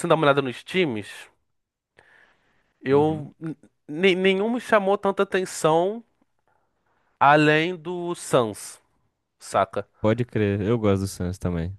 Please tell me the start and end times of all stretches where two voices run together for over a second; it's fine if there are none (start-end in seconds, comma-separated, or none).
none